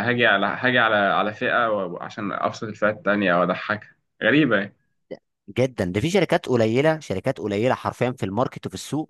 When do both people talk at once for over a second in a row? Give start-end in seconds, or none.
none